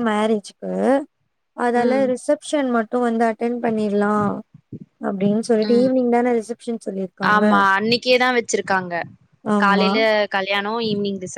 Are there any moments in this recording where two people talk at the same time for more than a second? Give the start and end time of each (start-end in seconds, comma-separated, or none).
none